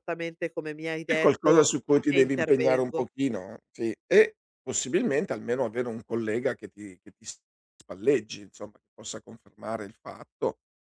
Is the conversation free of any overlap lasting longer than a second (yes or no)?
no